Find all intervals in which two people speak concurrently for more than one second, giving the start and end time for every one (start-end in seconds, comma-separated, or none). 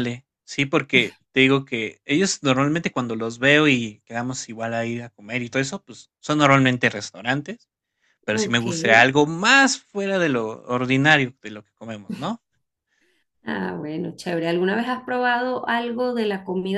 none